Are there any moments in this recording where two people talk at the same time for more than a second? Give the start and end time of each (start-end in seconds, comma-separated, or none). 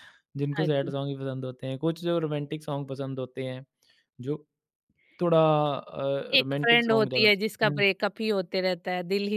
6.4-7.8